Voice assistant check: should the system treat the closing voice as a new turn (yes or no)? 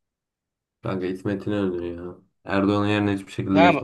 yes